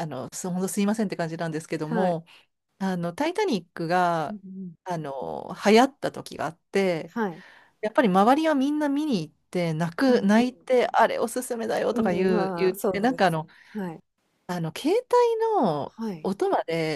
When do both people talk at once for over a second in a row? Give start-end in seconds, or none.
11.9-13.5